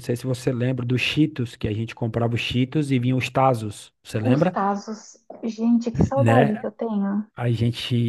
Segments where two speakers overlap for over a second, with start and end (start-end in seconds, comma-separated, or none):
none